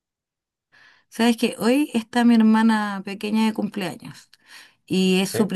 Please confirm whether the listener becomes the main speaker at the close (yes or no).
no